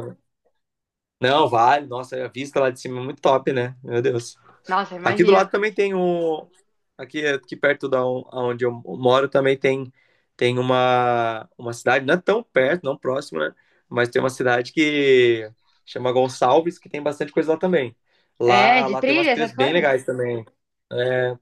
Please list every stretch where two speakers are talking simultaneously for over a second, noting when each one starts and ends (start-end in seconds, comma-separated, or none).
18.4-19.9